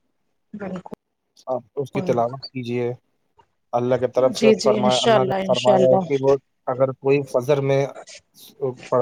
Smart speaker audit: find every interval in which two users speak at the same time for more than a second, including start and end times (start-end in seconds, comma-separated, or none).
4.4-6.1